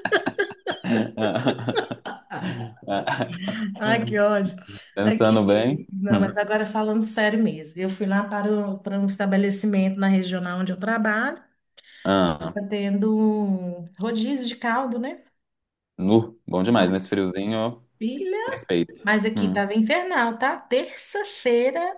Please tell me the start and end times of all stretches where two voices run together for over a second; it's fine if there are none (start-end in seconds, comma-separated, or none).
5.0-6.3